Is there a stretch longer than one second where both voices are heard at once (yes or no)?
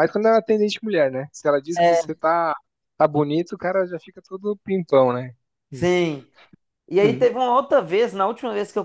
no